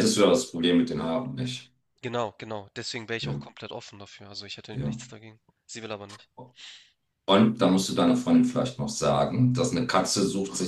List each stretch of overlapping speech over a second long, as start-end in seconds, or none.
none